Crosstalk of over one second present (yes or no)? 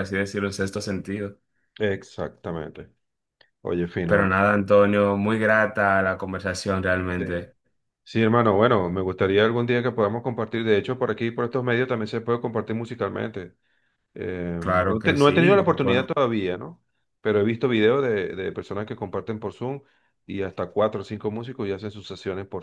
yes